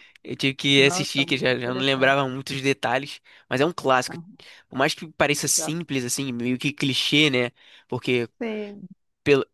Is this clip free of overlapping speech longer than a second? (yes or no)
no